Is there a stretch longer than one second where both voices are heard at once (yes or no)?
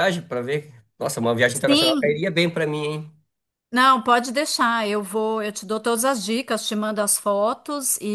no